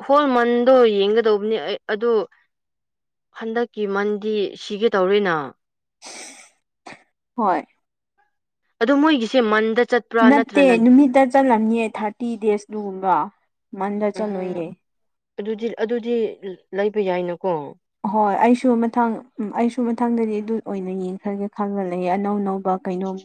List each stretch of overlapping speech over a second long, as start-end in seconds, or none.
none